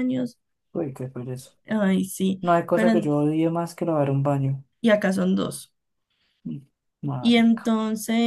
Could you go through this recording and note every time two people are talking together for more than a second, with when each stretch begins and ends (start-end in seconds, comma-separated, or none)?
none